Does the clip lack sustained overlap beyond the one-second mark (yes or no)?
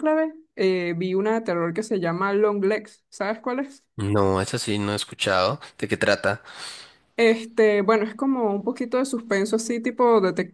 yes